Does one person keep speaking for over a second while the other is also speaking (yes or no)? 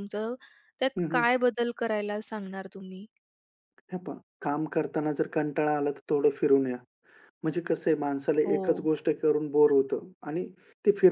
no